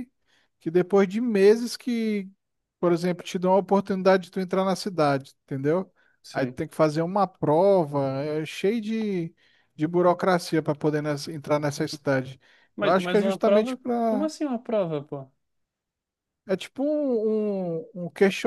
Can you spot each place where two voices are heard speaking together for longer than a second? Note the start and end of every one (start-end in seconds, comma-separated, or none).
12.8-14.3